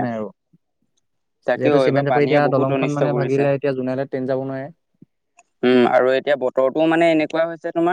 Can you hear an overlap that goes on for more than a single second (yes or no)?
yes